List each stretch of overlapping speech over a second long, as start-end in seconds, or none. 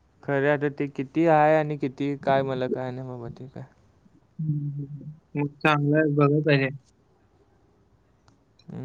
none